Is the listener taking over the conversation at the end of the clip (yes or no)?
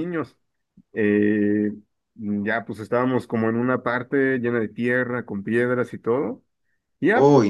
no